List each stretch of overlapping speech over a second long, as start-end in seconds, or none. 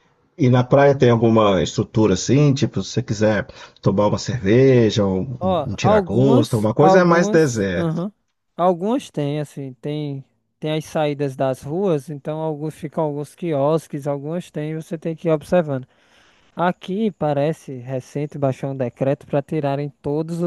5.4-8.0